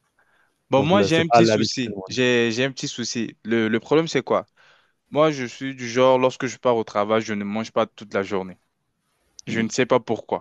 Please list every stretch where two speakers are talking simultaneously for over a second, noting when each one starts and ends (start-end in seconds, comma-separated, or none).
0.7-2.2